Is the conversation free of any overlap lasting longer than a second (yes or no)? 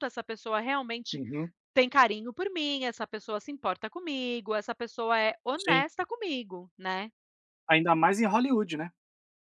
yes